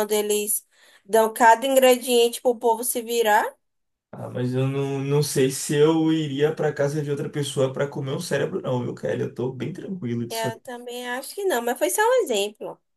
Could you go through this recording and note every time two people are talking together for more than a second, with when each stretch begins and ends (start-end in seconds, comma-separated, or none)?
none